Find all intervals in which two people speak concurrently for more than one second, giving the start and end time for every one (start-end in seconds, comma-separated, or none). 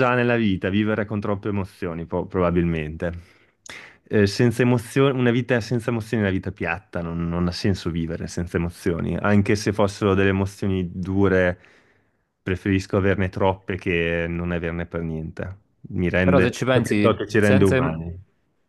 16.2-18.0